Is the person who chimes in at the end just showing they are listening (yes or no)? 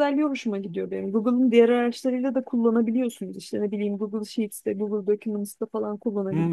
no